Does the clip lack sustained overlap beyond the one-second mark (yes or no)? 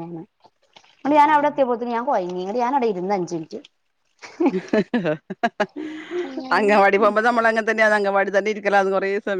yes